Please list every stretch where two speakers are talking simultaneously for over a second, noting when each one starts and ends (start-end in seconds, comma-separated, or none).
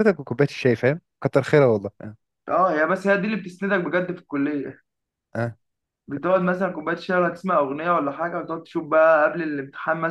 none